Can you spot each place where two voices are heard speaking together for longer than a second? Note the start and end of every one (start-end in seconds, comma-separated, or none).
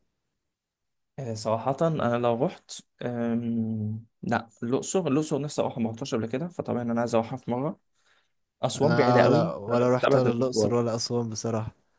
8.8-10.7